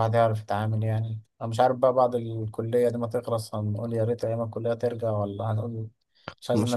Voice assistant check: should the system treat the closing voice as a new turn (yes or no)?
yes